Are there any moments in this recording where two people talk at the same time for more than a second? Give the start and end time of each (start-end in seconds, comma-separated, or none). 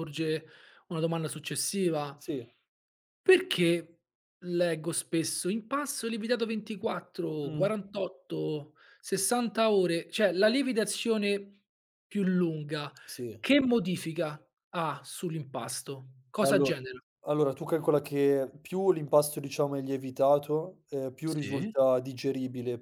none